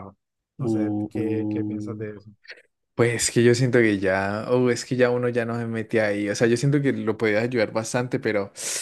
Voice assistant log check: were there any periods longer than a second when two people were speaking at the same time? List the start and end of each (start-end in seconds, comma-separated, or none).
0.6-2.1